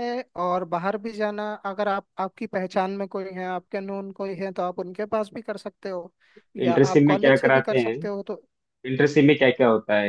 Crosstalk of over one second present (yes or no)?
yes